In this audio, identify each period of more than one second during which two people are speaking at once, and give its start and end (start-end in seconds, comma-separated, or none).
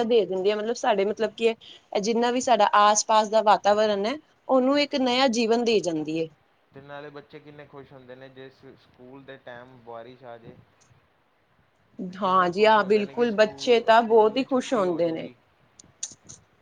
12.2-15.3